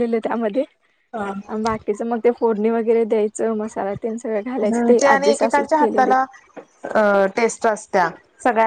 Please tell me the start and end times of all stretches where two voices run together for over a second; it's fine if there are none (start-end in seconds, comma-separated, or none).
4.5-6.1